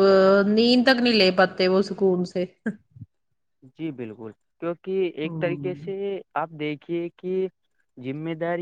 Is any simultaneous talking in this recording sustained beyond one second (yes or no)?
no